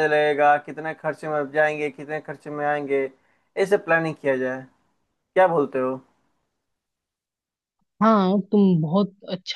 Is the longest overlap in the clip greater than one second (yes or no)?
no